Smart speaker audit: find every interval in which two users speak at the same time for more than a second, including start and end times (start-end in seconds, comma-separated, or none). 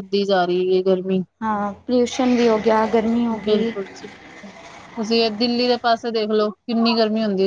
none